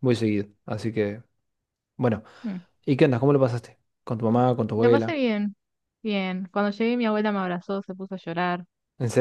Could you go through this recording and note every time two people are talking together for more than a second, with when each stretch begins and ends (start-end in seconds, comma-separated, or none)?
none